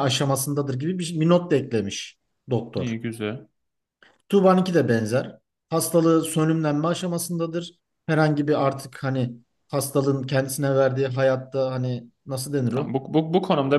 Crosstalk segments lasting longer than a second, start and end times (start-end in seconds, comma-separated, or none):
none